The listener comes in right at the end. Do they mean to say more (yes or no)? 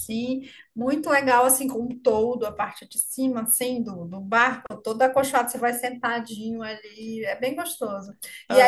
no